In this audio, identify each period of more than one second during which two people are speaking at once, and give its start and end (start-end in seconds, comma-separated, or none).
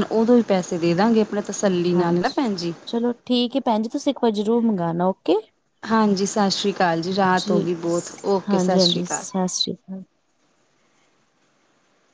7.4-9.2